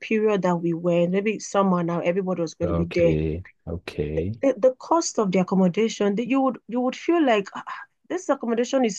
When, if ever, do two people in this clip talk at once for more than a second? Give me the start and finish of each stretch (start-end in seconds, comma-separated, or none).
none